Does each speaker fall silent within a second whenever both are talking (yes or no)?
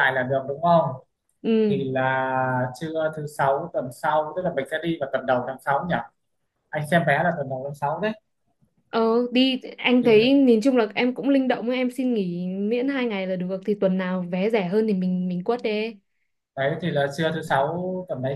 yes